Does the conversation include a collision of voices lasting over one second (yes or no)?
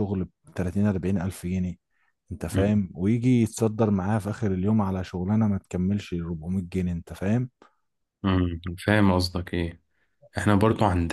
no